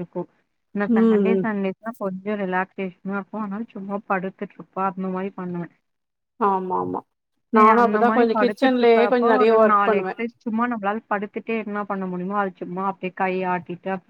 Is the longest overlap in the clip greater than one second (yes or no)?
yes